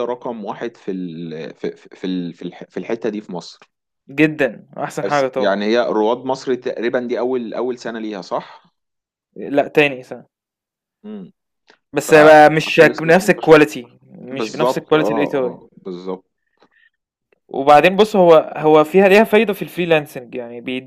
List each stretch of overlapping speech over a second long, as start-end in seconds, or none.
11.9-13.5, 14.3-15.8